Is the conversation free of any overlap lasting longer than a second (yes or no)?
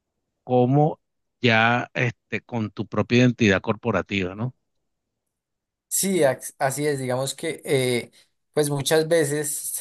yes